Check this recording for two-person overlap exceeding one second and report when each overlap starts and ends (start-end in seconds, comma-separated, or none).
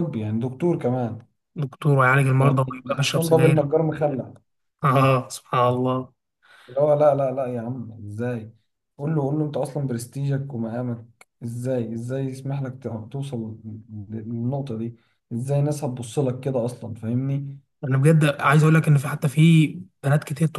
2.4-3.7